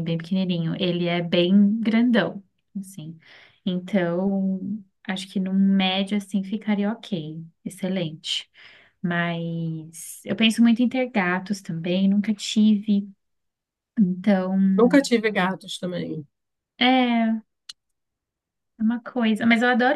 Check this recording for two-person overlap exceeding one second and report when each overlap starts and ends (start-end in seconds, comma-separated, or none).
none